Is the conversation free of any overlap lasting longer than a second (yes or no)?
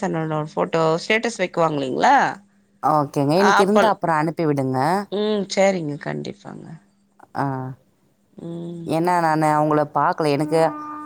yes